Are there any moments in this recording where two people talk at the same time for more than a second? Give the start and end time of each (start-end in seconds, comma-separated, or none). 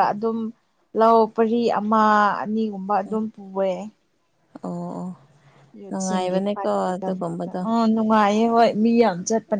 5.9-7.6